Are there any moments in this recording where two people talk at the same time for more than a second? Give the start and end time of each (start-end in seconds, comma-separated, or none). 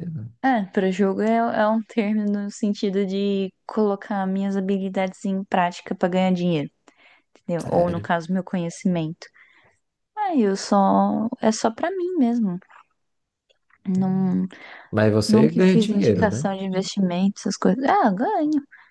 15.3-16.5